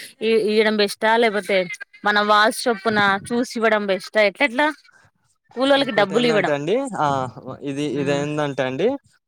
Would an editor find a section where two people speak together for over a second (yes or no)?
no